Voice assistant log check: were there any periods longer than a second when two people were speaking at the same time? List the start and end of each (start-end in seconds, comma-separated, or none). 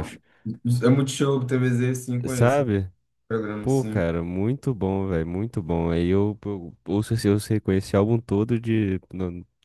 none